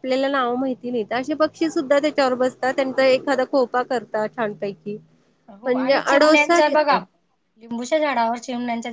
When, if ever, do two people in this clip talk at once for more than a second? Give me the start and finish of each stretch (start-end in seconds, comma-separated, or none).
5.7-7.0